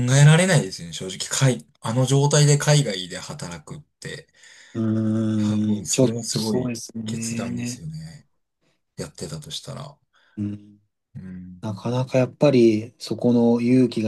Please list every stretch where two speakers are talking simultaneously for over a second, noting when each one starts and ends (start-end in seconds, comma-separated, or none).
5.4-7.8